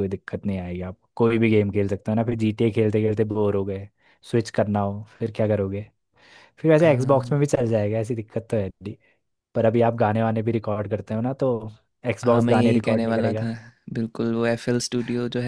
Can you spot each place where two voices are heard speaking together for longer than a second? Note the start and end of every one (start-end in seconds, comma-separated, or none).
12.2-13.4